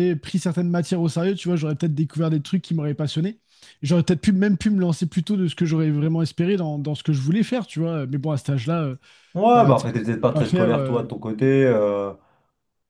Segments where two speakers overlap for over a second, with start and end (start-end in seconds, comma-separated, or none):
9.6-11.1